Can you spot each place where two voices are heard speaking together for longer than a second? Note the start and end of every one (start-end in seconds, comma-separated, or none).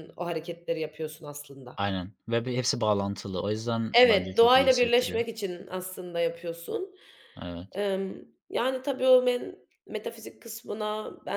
3.9-5.2